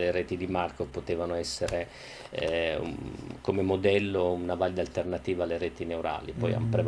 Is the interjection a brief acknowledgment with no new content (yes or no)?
no